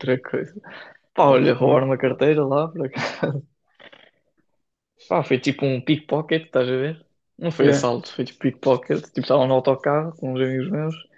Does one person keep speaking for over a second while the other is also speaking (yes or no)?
yes